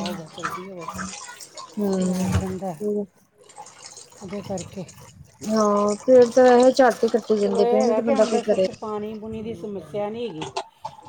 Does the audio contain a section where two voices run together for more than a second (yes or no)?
no